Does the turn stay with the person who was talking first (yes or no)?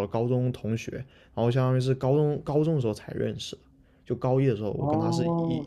no